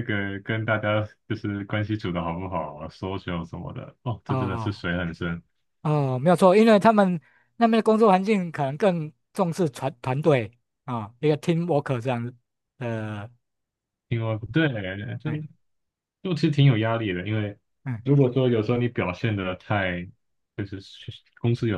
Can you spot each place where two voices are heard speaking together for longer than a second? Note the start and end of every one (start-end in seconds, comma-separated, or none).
none